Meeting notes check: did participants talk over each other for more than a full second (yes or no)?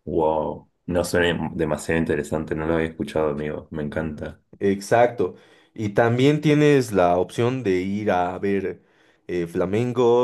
no